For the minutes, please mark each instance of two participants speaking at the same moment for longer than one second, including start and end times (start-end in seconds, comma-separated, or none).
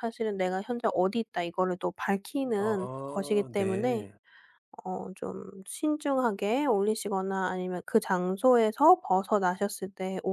2.6-4.0